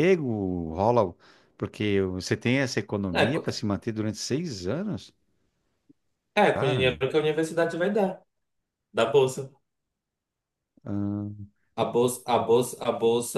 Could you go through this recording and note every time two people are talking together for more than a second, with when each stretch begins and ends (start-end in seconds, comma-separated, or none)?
none